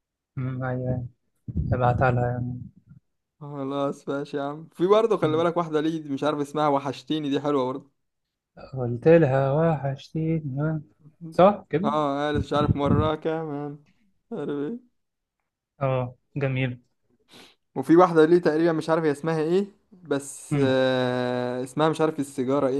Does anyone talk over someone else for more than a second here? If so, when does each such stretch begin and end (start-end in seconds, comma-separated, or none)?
none